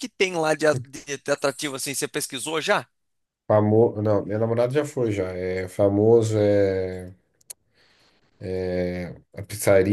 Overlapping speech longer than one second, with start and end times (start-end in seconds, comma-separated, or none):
none